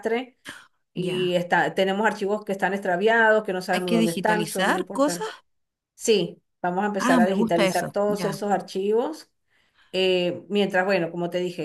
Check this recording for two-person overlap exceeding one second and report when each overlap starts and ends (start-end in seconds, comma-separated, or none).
3.7-5.3, 7.0-8.4